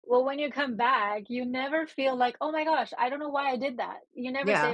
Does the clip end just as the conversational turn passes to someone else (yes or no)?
yes